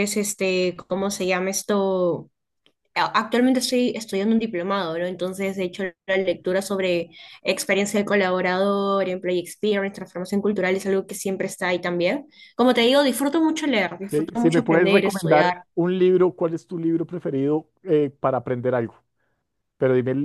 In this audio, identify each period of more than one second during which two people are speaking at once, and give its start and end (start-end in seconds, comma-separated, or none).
14.1-15.5